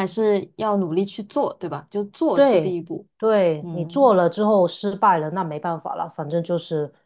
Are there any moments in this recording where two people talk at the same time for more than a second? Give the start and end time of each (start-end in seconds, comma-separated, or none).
none